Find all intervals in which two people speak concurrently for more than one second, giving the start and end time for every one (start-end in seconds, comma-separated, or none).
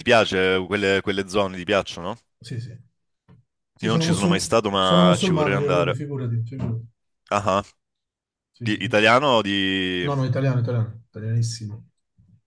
3.8-6.1